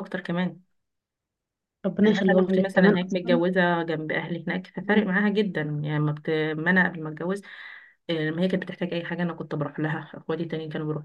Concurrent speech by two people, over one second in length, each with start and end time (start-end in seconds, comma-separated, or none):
2.0-3.4